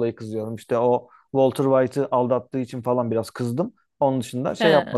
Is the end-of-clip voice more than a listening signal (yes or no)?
no